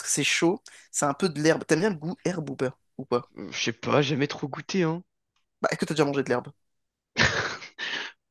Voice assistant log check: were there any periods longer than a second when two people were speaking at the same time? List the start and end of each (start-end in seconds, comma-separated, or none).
none